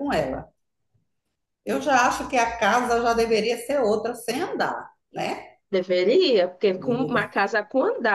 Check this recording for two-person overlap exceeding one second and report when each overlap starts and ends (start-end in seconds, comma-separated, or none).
none